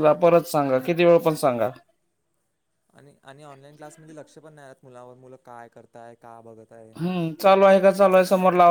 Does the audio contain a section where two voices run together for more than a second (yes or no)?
no